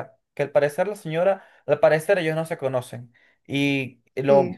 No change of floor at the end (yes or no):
yes